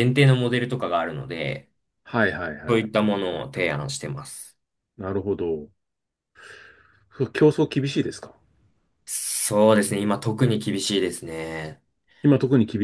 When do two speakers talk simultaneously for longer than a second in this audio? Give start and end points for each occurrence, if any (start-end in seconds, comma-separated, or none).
none